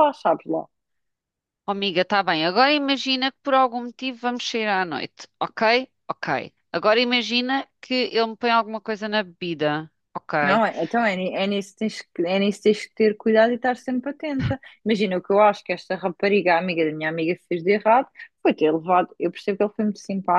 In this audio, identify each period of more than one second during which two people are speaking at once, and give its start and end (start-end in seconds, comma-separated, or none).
none